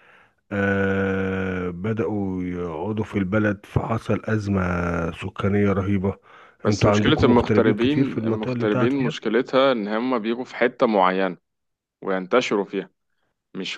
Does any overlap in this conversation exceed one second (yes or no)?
yes